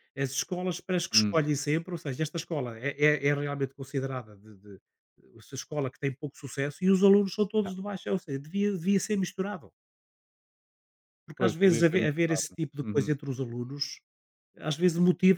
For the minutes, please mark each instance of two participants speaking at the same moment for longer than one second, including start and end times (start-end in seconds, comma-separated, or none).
11.4-13.1